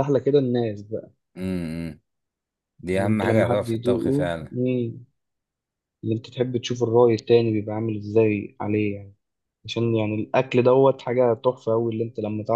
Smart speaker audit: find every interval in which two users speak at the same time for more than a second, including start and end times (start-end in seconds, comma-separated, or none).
2.9-4.5